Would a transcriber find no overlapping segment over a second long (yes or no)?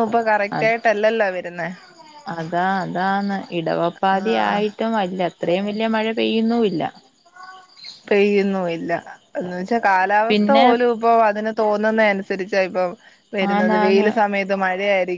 yes